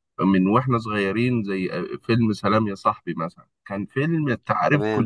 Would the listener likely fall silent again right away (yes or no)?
yes